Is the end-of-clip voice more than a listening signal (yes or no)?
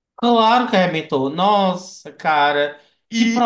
yes